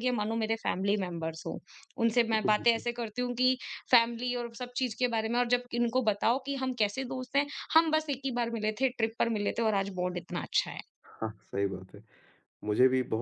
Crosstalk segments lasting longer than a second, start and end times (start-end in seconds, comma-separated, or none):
none